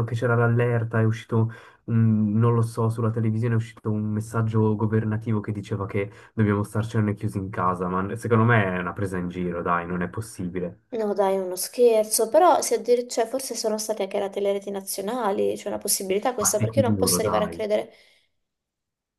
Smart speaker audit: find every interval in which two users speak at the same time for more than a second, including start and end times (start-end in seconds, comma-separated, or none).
16.4-17.6